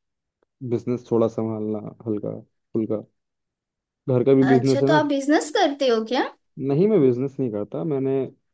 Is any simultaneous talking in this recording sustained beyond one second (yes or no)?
no